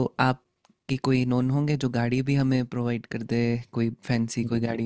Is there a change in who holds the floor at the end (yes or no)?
yes